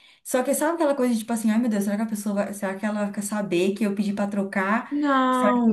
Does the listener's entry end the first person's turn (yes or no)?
no